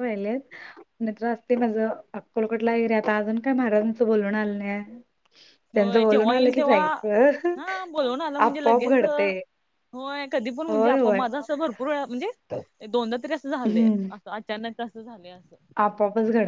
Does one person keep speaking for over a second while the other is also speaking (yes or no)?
no